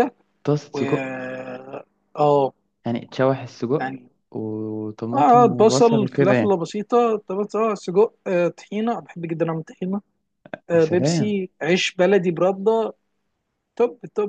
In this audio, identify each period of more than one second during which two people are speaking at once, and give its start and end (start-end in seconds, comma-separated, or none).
5.1-6.6